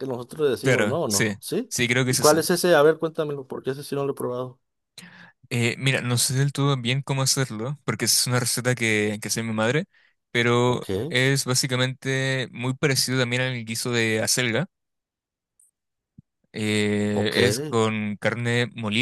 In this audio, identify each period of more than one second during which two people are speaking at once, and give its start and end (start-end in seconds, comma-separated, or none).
0.6-2.4